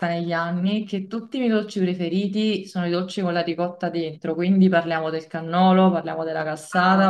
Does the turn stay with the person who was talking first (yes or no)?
yes